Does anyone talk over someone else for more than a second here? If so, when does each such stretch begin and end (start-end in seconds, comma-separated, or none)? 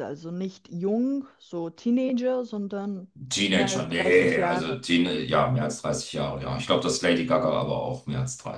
3.5-4.8